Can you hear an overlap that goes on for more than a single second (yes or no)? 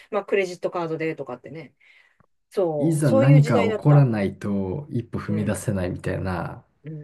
yes